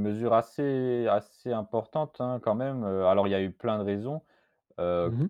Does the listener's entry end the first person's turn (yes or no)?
no